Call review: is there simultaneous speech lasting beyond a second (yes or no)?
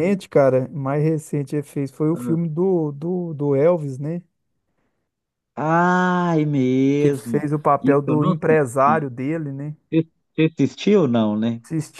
yes